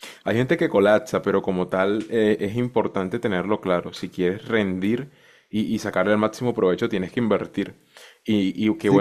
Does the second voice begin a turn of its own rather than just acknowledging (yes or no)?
no